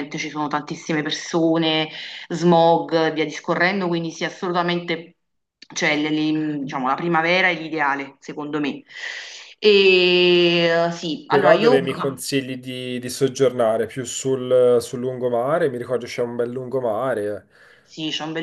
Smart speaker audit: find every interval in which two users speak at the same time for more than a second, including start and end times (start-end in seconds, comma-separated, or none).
none